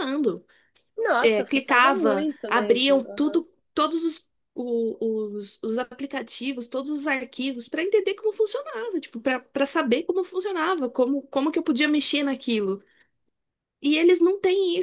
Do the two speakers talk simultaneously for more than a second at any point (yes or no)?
yes